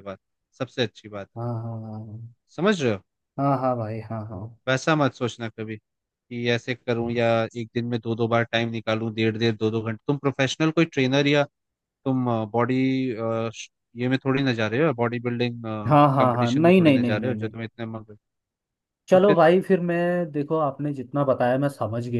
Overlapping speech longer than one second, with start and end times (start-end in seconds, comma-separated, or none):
15.9-17.6